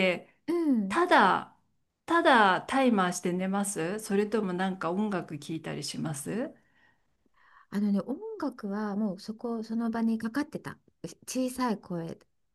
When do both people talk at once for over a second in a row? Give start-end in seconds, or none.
none